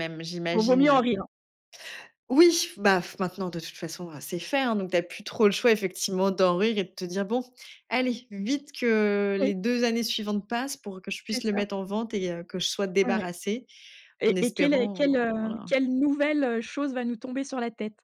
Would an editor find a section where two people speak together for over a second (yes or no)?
yes